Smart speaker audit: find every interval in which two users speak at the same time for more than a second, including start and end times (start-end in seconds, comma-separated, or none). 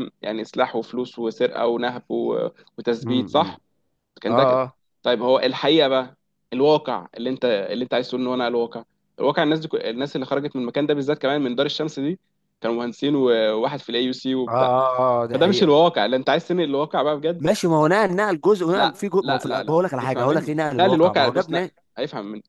18.7-21.7